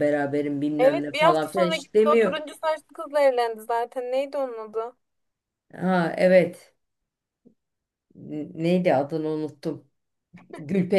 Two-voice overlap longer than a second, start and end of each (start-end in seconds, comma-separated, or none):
0.8-2.3